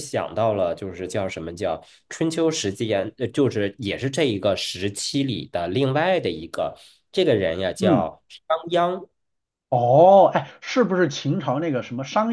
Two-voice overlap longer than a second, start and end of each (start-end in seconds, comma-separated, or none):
none